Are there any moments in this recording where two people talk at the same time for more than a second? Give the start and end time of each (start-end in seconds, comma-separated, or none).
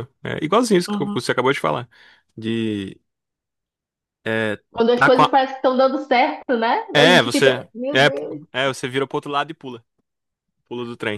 6.9-8.4